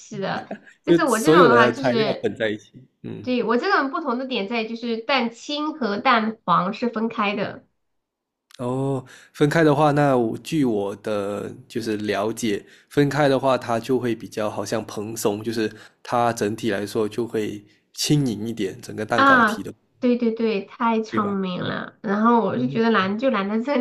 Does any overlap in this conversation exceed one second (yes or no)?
yes